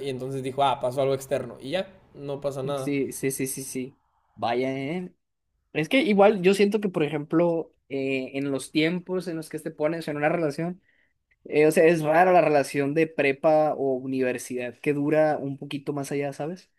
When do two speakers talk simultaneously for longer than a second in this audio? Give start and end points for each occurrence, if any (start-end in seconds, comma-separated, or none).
none